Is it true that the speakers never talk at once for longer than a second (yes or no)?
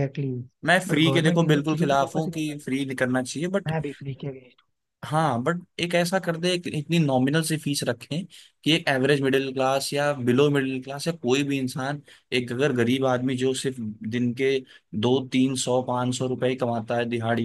no